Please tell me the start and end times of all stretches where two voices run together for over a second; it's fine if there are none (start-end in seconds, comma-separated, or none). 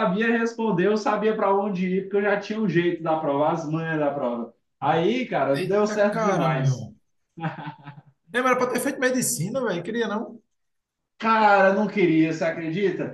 5.5-6.9